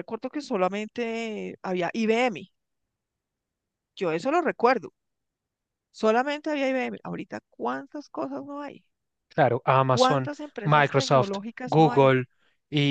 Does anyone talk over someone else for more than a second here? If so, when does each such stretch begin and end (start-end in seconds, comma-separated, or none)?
9.9-12.2